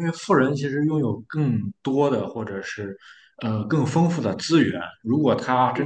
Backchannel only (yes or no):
yes